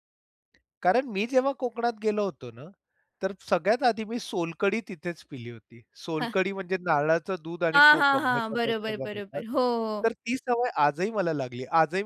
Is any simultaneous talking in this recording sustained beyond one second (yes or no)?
yes